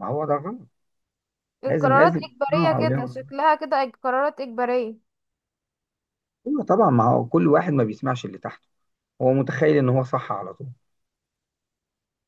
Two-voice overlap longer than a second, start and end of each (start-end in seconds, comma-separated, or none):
1.6-3.2